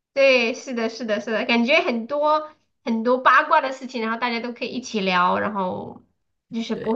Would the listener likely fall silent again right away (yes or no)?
yes